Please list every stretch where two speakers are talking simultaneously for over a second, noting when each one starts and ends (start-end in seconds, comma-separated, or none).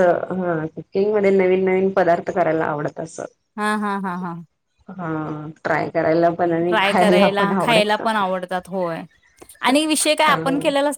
6.7-8.0